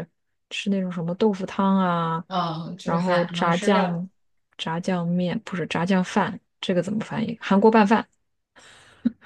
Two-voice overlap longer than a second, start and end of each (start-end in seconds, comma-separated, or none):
2.8-4.0